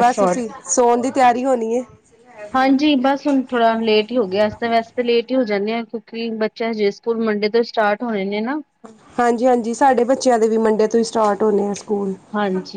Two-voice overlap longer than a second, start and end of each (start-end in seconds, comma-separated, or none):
none